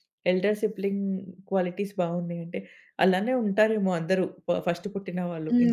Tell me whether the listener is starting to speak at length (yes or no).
yes